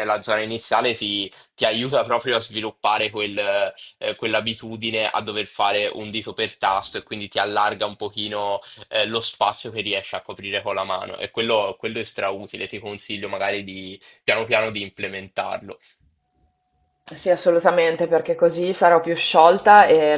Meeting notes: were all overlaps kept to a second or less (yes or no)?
yes